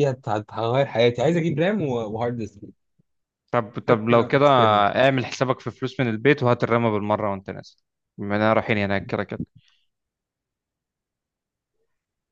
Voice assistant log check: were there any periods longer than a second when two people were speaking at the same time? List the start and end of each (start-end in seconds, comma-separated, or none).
none